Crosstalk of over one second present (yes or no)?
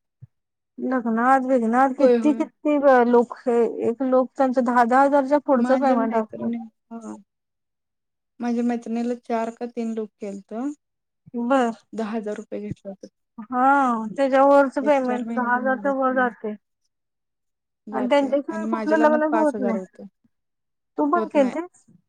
yes